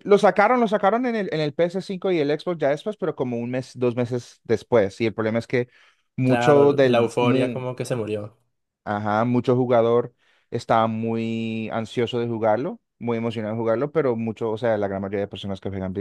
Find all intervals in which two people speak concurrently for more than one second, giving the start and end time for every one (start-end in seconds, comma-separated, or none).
6.2-7.7